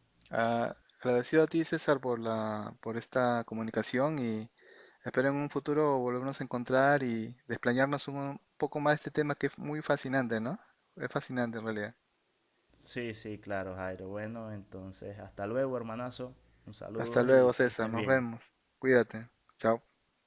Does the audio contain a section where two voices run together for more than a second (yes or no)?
yes